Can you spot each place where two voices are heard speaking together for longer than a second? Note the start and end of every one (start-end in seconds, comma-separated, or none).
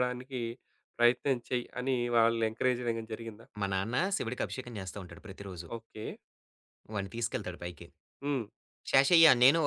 none